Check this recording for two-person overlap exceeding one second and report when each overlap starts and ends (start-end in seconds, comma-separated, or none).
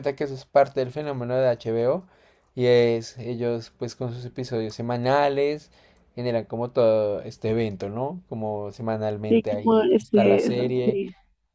9.3-11.0